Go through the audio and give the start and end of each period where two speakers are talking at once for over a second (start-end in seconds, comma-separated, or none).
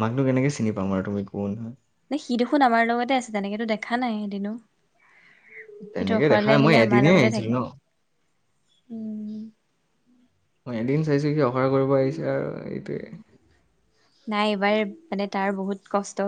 6.0-7.6